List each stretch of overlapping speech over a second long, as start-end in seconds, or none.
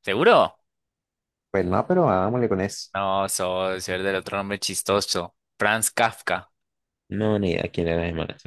none